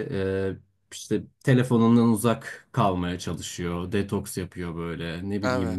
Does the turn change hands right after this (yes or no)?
no